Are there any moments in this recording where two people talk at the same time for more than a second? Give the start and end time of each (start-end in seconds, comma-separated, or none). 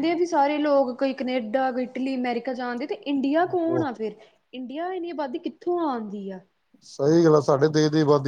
none